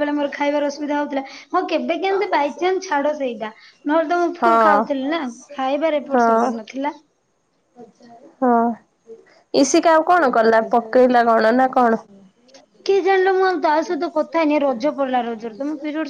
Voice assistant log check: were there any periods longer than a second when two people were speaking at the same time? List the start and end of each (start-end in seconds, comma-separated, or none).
none